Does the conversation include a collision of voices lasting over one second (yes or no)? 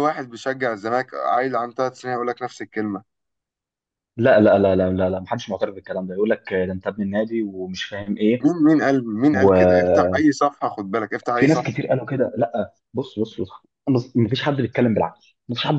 no